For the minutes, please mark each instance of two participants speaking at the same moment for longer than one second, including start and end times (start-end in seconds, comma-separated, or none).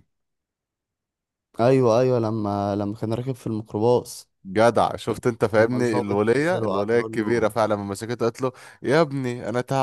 5.5-7.5